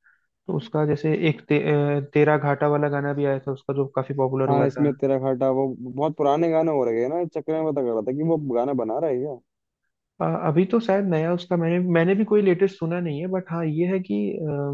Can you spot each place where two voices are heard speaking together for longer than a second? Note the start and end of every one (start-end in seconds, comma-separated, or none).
none